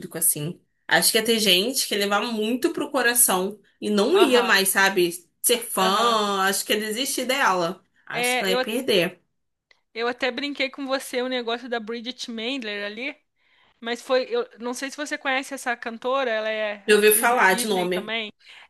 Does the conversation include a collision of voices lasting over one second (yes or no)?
yes